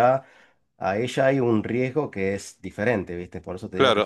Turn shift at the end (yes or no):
yes